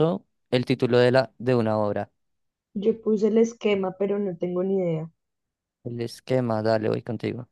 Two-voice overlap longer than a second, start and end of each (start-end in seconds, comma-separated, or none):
none